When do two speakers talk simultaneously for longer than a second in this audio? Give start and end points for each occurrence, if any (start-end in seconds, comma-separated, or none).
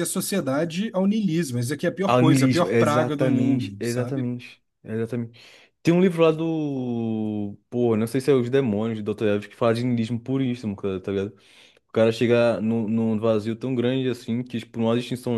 2.0-4.3